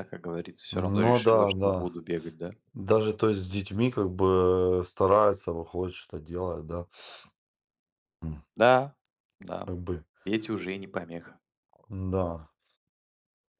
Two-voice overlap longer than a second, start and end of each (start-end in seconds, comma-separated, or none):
0.7-1.9